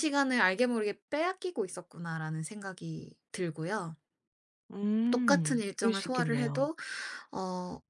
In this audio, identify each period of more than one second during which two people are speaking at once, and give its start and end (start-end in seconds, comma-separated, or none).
5.1-6.7